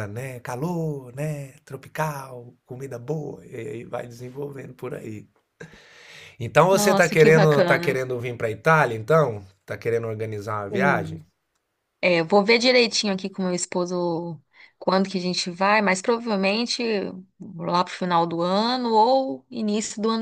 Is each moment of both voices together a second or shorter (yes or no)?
no